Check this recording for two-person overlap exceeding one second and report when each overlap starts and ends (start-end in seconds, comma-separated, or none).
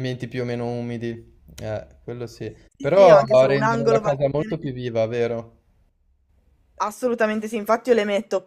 2.8-4.6